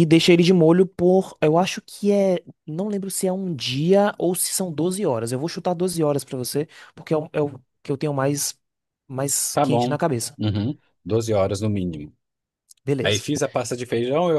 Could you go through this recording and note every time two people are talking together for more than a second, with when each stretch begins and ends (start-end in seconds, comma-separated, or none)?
none